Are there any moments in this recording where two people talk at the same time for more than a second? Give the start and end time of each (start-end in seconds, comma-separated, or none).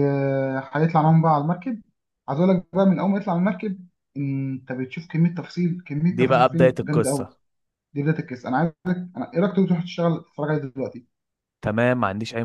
6.1-7.3